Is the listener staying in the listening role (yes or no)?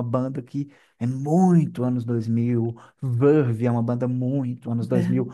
yes